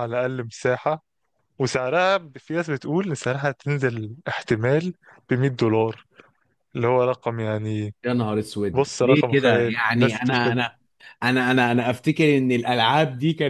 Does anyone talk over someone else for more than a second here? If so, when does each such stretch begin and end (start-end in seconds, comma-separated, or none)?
8.7-10.6